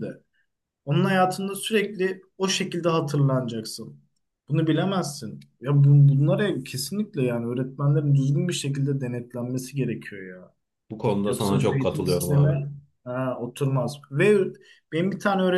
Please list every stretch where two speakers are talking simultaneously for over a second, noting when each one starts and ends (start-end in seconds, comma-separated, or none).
11.2-12.6